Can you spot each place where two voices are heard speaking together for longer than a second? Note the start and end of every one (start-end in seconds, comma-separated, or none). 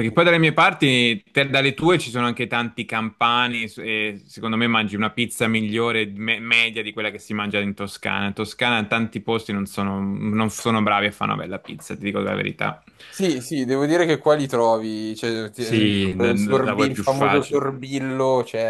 15.6-17.6